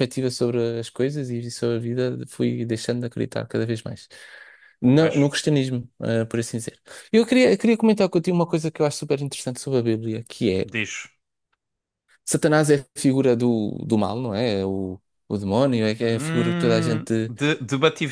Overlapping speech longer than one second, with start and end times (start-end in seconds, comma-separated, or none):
16.0-17.3